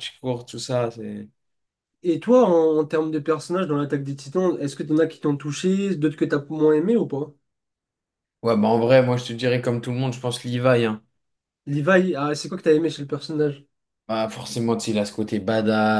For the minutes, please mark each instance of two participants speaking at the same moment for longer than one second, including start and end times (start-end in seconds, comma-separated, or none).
none